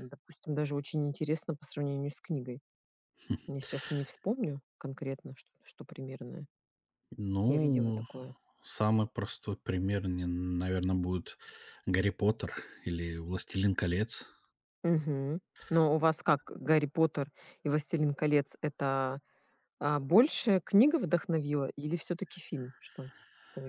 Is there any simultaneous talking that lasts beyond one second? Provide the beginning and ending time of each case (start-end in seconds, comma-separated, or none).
none